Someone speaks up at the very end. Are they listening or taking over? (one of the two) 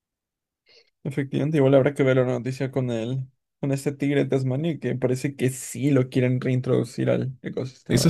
taking over